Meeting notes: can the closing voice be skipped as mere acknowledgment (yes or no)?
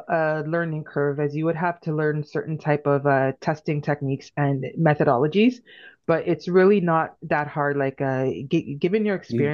yes